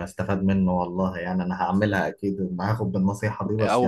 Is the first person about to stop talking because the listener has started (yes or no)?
yes